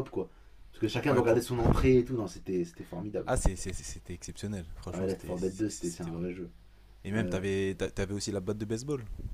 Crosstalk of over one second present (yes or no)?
yes